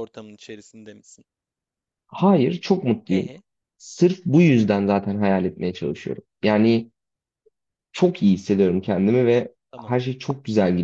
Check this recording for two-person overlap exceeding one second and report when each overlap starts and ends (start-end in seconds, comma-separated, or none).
none